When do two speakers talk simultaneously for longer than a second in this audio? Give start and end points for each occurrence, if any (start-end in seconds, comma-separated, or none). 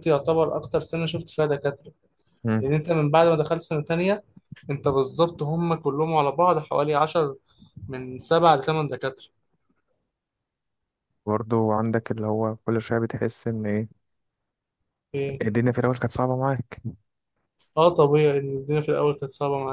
none